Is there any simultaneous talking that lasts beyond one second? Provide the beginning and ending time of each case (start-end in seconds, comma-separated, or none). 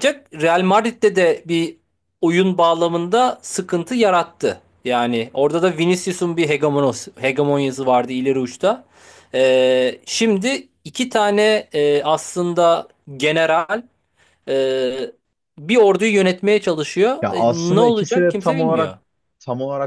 17.2-18.9